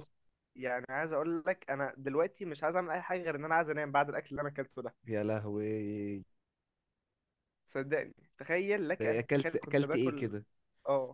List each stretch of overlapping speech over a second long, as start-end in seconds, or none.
9.0-10.3